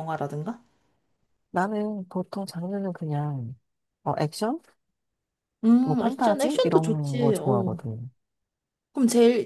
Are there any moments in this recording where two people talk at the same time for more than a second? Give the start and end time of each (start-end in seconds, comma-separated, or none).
5.8-7.8